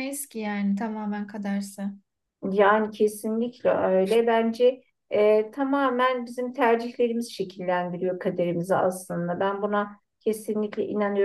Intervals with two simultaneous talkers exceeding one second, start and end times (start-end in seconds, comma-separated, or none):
none